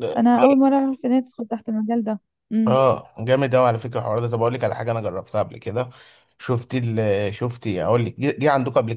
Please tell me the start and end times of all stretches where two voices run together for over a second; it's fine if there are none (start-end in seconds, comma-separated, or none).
none